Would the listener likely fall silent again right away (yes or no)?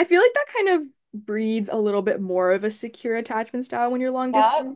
yes